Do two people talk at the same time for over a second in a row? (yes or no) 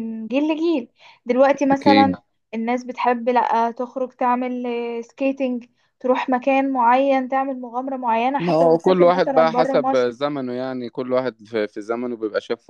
yes